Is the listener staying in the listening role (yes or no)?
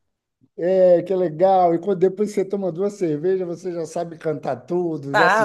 no